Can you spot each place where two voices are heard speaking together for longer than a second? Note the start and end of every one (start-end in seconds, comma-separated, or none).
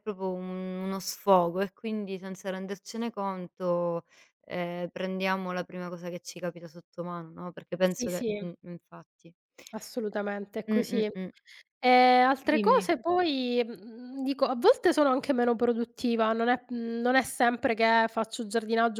none